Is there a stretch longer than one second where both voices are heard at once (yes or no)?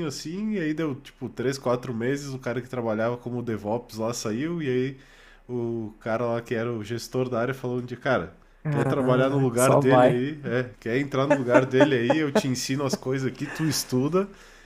yes